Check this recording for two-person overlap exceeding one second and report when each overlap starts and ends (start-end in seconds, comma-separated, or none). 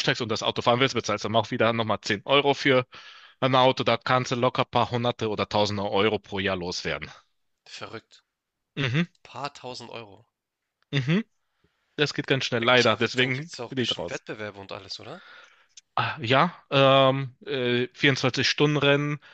12.6-14.2